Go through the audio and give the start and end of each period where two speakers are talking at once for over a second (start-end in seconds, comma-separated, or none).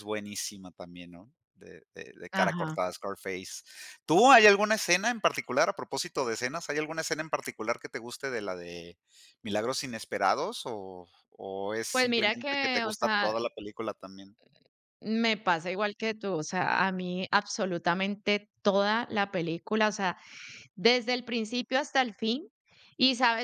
11.9-13.3